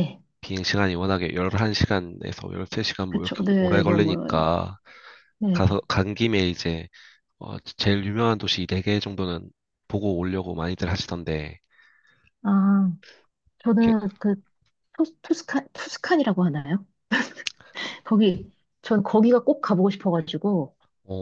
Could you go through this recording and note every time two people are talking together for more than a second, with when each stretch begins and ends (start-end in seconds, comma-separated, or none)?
3.1-4.5